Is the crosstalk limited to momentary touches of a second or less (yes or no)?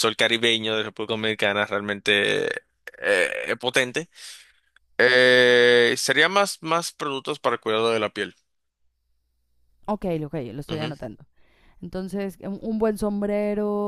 yes